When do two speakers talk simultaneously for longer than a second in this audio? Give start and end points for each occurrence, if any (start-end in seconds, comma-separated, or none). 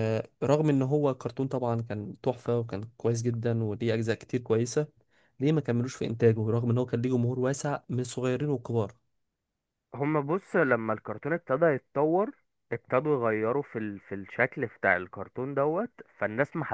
none